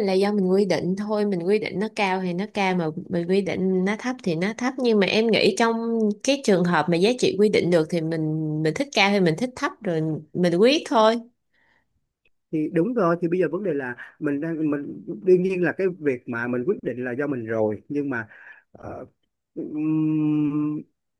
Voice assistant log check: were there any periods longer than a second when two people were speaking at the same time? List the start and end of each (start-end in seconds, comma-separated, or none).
none